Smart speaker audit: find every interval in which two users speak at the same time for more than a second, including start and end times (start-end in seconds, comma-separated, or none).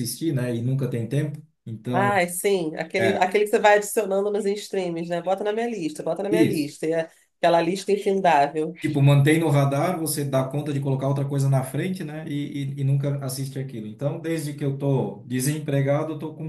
none